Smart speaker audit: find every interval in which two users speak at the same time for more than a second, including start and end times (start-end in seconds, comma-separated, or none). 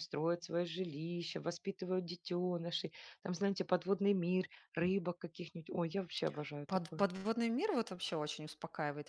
none